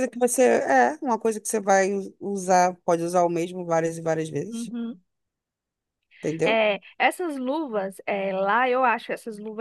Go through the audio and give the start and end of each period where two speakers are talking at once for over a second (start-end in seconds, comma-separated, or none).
none